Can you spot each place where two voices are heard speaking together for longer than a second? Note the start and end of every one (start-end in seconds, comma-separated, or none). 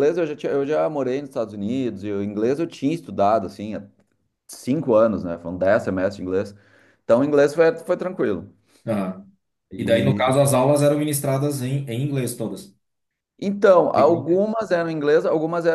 none